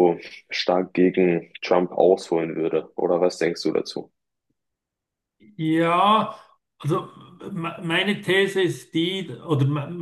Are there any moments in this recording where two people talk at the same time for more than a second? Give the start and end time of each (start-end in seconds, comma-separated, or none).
none